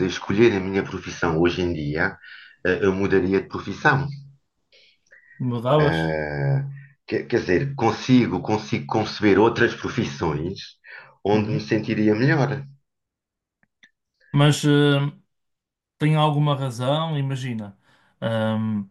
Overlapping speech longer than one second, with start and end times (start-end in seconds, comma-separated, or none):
none